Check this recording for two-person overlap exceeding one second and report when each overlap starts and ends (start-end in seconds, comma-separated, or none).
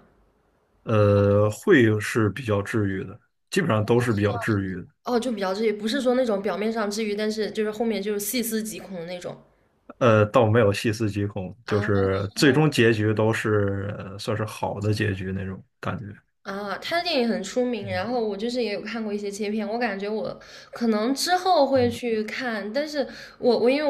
none